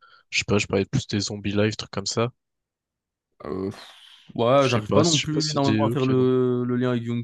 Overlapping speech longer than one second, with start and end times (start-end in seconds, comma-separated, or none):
4.6-6.3